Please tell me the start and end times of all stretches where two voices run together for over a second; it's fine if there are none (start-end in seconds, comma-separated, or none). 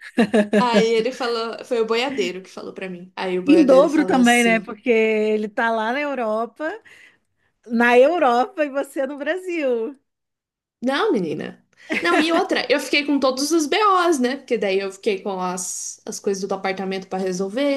3.4-4.7